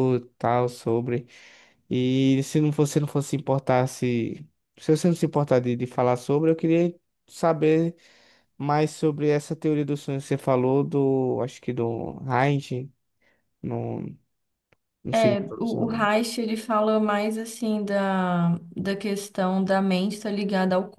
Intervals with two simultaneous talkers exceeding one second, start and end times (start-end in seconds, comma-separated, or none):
none